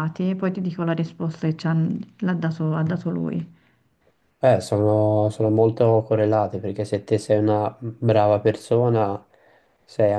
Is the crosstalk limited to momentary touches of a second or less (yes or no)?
yes